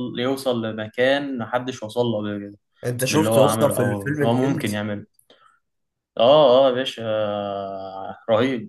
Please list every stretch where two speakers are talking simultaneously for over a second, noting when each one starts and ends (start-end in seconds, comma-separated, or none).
3.1-4.8